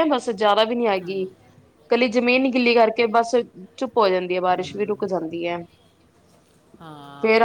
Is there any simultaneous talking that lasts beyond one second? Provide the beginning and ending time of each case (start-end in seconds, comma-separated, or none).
none